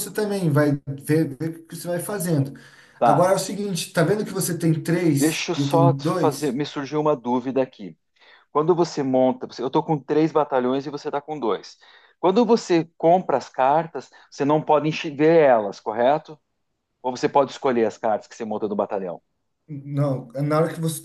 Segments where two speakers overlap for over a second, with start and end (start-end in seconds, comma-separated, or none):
5.1-6.6